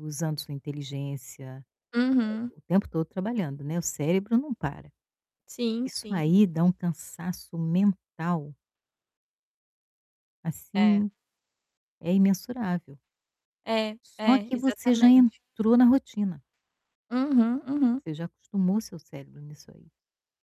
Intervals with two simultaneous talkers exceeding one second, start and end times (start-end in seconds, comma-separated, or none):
14.0-15.4